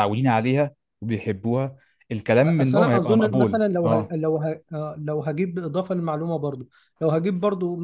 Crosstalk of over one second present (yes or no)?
yes